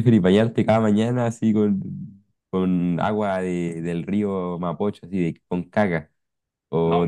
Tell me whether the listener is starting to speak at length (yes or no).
no